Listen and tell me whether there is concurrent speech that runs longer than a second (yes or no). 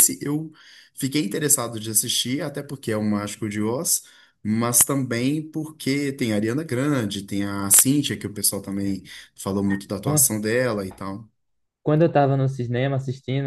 no